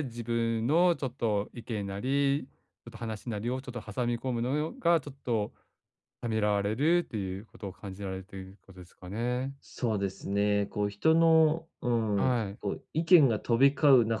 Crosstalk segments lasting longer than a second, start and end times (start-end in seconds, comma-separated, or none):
none